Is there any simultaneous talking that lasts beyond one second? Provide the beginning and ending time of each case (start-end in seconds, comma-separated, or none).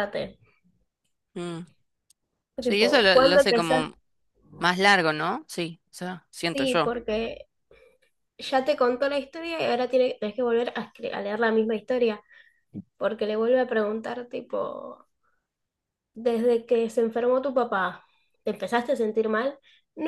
2.6-3.9